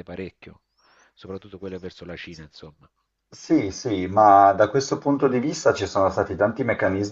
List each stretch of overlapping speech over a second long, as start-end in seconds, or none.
none